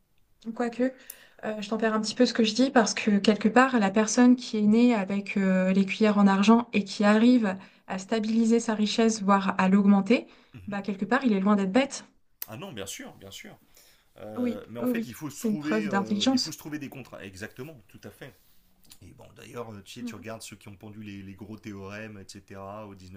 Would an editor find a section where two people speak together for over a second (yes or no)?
yes